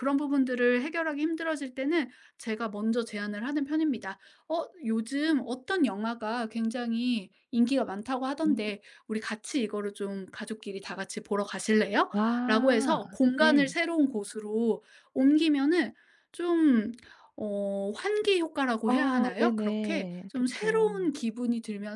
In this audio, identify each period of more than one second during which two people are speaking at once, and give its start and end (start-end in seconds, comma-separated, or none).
12.1-13.8, 18.8-20.9